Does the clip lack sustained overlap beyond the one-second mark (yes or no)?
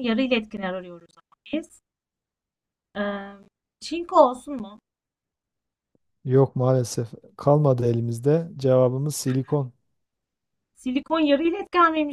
yes